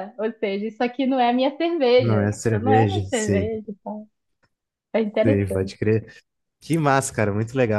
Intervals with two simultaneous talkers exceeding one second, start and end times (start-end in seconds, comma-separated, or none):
2.0-3.5